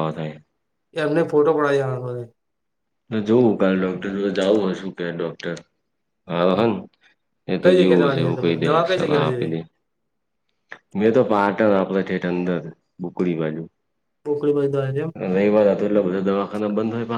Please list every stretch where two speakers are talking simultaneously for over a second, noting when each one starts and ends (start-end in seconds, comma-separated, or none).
7.6-9.5